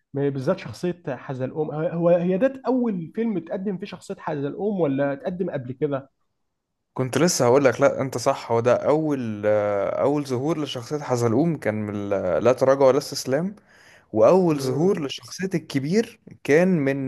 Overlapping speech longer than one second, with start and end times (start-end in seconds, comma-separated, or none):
none